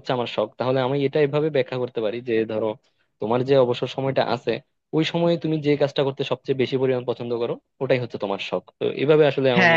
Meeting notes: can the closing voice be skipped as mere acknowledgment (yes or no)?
no